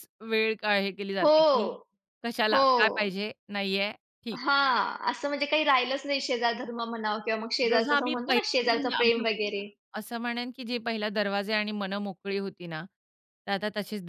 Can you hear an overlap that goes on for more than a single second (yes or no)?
yes